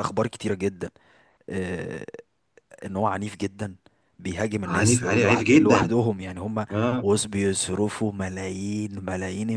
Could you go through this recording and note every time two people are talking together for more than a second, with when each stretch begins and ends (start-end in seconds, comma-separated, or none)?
4.7-6.0